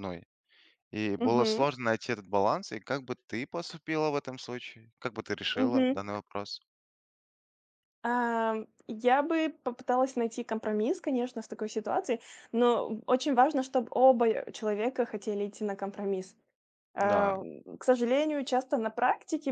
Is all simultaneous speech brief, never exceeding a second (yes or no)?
yes